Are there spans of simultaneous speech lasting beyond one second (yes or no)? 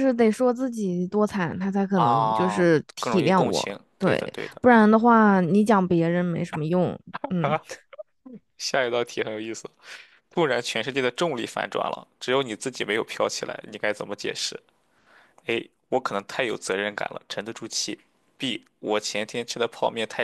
yes